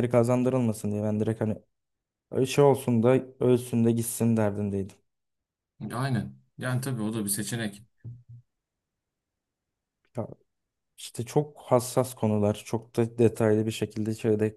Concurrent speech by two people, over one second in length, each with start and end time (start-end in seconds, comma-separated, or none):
none